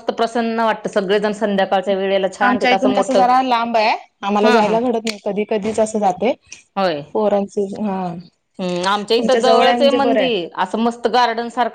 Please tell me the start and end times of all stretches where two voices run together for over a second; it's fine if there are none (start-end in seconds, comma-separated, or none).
9.2-10.5